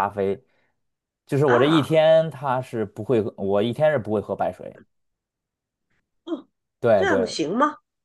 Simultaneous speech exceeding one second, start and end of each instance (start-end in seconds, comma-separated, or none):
none